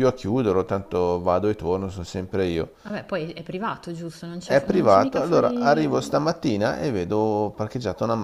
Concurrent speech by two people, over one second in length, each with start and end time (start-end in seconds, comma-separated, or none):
4.4-6.2